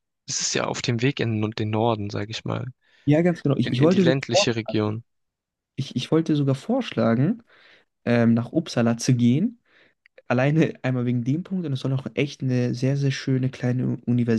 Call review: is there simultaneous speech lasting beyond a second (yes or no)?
yes